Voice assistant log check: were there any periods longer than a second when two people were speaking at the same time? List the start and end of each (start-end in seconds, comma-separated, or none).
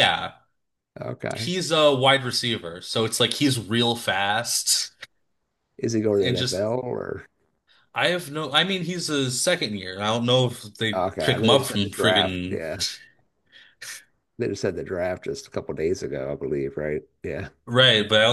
10.9-12.6